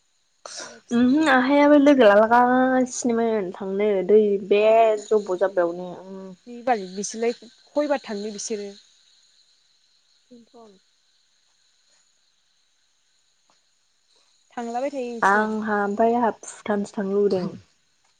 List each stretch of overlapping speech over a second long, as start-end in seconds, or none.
none